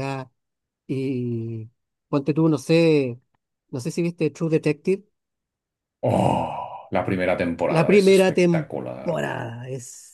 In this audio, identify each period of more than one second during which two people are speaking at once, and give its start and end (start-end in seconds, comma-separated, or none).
7.7-9.3